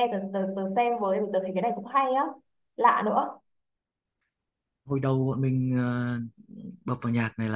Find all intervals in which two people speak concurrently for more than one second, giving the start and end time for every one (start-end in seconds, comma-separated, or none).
none